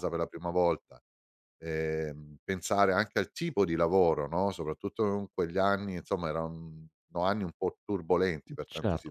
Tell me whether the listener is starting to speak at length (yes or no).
yes